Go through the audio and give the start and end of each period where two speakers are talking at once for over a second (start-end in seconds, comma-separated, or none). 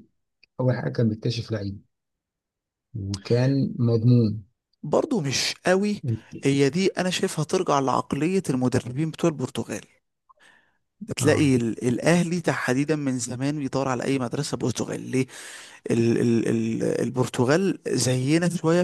none